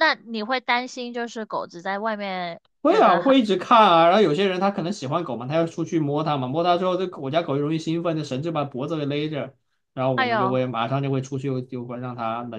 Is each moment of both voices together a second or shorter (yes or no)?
yes